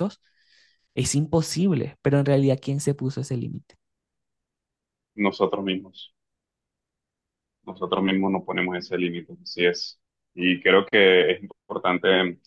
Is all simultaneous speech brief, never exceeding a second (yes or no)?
yes